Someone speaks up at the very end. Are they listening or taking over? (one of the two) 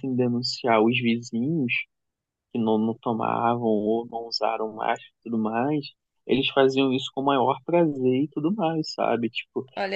listening